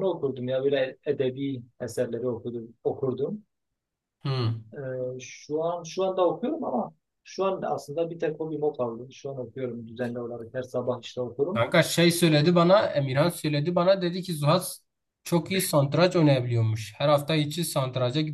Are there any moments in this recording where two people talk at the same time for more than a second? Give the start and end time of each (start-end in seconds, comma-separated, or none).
none